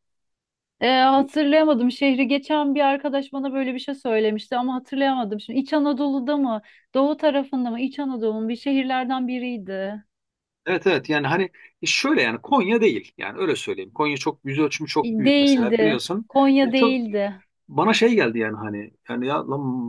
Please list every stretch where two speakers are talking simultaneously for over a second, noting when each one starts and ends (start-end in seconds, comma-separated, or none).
15.0-17.0